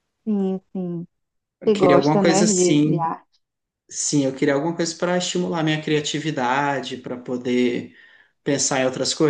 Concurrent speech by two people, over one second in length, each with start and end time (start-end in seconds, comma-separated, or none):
1.6-3.1